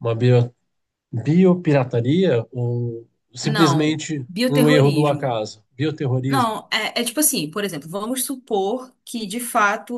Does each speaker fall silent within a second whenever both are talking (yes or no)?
no